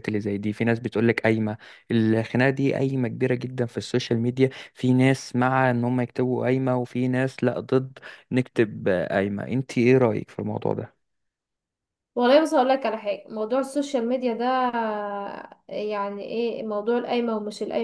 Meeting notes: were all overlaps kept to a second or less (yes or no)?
yes